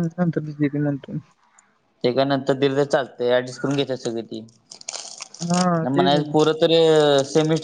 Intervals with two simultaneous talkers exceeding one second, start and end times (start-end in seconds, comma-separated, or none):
none